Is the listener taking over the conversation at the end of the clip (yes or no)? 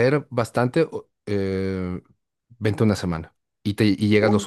no